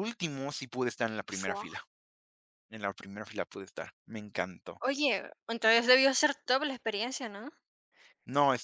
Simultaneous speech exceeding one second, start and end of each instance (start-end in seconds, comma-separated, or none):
none